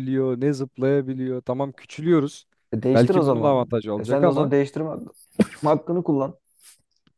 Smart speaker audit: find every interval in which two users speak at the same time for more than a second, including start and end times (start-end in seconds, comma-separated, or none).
2.9-4.5